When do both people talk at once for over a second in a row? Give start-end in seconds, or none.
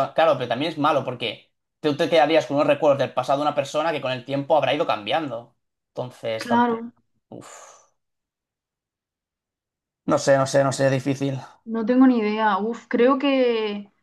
none